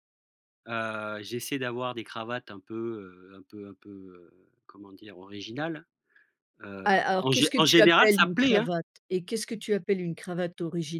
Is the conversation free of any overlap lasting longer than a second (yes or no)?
no